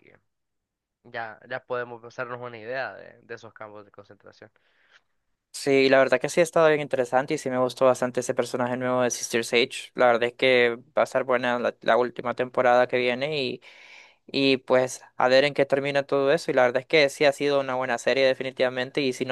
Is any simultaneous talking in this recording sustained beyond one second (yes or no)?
no